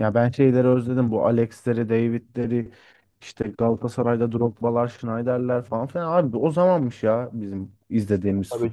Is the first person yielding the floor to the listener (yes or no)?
yes